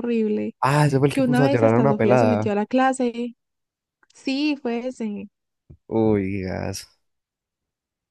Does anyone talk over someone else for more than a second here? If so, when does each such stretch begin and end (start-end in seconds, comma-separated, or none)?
1.1-2.5